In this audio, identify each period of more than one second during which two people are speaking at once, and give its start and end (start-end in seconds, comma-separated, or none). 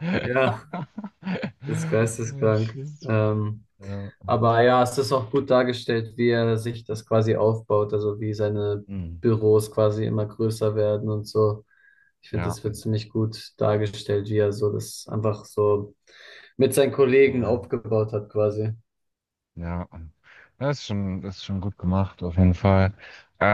1.6-2.9